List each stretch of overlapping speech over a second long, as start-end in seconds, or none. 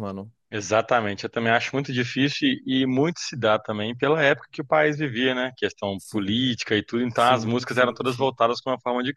7.1-8.3